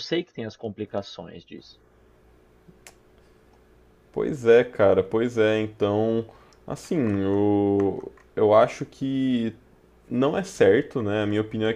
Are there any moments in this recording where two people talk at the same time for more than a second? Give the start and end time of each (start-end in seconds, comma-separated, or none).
none